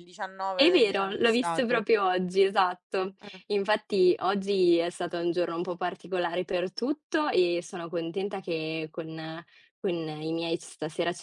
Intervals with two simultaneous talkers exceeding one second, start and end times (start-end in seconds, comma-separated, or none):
0.6-1.9